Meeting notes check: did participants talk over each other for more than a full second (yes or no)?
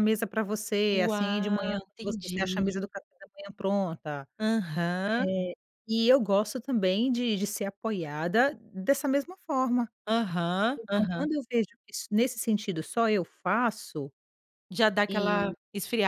yes